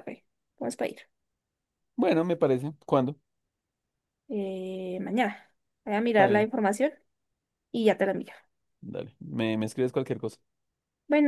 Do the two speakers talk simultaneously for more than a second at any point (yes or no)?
no